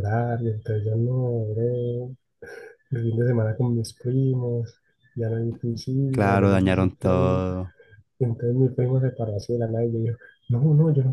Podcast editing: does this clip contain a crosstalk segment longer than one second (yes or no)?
yes